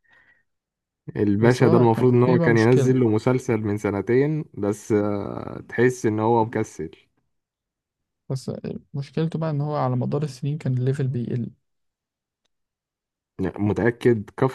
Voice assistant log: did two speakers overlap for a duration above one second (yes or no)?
yes